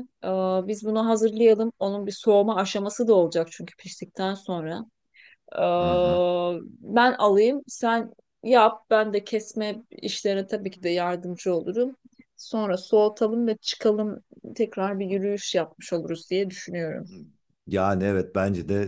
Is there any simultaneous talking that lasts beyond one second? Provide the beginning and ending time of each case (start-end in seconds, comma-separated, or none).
none